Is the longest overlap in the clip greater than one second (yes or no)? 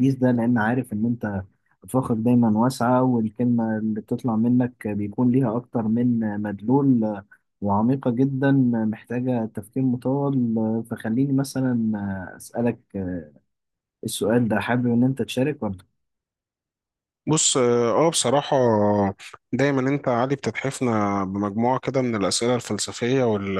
no